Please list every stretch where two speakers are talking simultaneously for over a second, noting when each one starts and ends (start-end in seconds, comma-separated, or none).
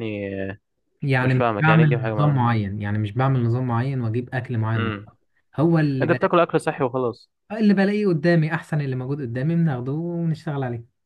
1.2-2.4